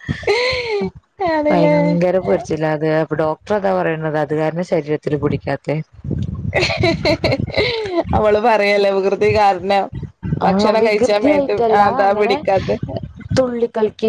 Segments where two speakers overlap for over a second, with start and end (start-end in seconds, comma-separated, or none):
10.5-12.3